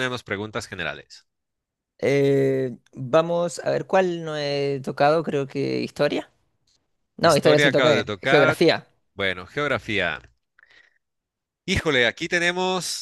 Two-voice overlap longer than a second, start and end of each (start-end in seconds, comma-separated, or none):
7.2-8.6